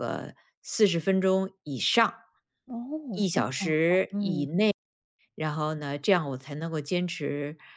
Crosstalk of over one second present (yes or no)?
no